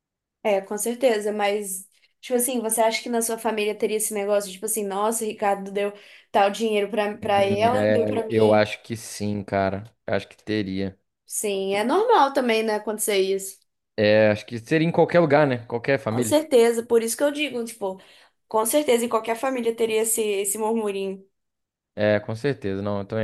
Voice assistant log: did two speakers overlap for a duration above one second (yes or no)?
yes